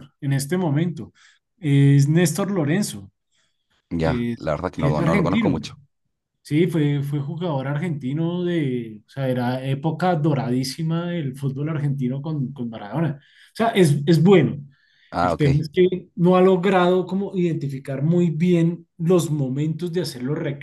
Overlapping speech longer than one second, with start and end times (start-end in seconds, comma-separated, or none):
4.0-5.6